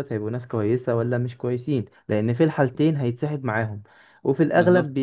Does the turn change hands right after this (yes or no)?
no